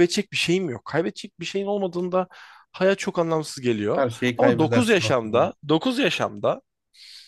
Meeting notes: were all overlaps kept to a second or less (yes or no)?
no